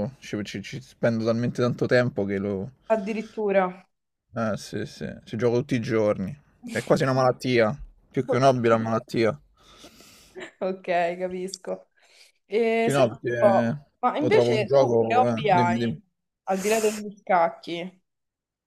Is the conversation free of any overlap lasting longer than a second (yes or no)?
no